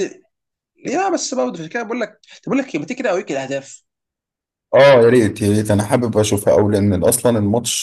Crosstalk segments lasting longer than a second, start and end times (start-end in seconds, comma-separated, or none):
none